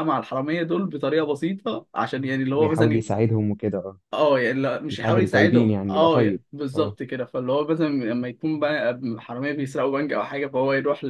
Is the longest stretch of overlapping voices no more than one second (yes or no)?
no